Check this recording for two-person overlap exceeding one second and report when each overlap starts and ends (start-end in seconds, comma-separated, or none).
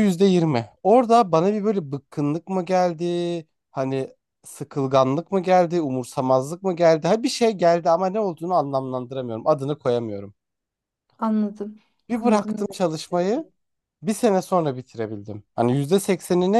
12.1-13.5